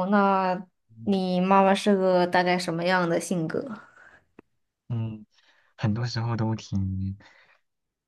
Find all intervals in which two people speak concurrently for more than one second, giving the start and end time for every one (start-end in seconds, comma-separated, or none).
none